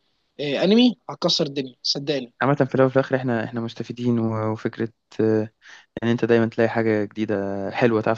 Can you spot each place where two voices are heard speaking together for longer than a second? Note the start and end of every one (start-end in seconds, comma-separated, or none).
none